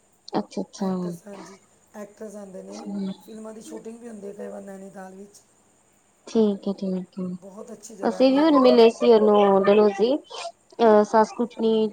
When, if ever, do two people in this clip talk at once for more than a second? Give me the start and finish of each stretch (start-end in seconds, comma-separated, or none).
7.4-8.8